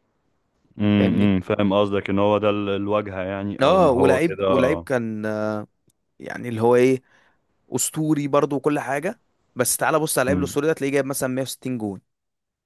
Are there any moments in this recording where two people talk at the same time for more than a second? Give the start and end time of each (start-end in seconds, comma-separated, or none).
3.6-4.9